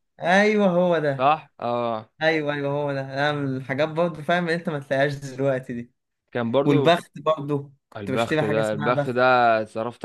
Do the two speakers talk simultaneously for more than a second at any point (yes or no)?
yes